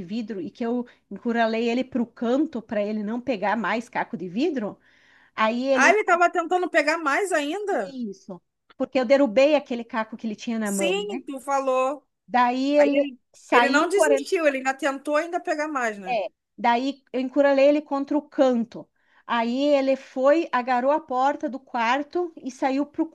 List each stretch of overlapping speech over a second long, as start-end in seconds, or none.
12.8-14.3